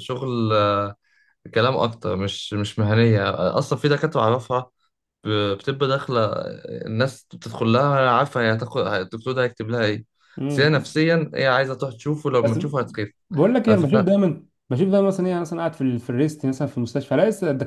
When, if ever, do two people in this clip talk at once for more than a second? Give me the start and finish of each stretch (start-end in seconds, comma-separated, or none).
none